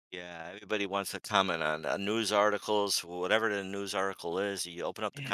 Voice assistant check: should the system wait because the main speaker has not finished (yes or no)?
no